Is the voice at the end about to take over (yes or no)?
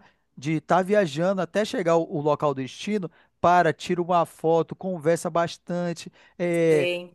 yes